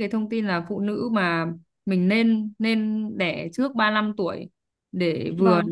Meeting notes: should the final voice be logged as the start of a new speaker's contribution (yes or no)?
no